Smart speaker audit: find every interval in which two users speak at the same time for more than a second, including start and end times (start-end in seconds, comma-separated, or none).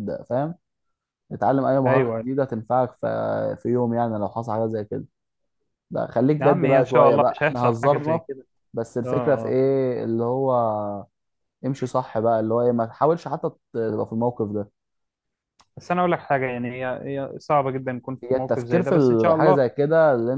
6.4-8.2, 18.2-19.7